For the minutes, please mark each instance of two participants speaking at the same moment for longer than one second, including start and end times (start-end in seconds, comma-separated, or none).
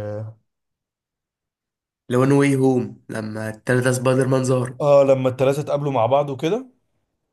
none